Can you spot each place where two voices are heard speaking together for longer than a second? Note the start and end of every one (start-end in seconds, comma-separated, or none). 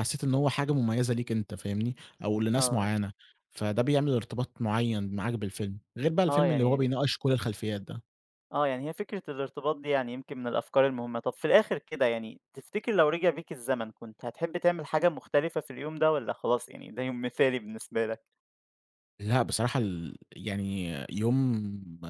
none